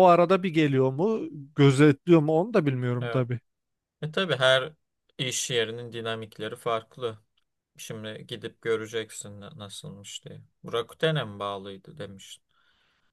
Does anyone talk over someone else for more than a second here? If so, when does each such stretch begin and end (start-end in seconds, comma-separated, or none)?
none